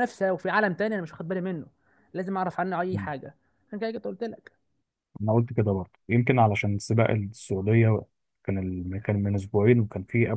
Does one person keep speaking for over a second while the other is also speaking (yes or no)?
no